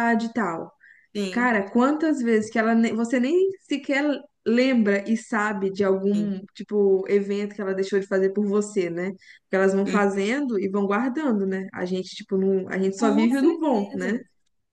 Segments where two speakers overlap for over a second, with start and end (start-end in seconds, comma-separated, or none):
13.0-14.2